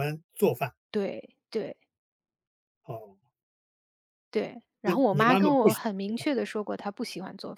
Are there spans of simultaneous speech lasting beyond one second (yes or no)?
yes